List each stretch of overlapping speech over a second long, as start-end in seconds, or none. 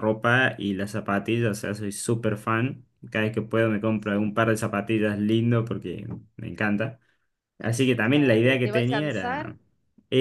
8.0-9.5